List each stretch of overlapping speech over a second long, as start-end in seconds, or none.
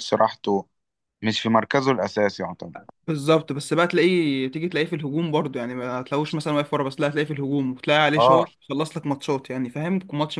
none